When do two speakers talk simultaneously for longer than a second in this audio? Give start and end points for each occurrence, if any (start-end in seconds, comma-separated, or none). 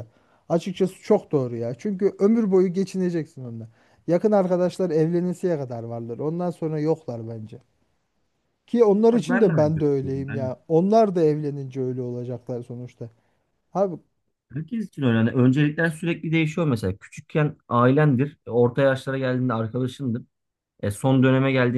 9.1-10.5